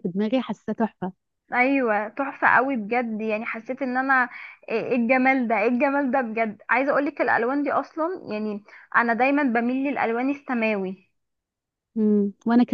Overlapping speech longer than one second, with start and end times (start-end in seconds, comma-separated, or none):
none